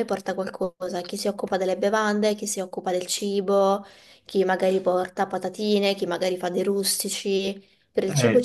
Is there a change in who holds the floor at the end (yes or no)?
yes